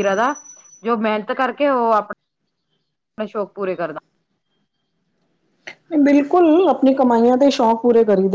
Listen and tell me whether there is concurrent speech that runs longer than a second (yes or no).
no